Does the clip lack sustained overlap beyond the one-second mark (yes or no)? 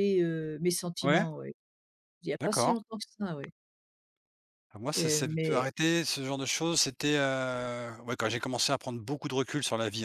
yes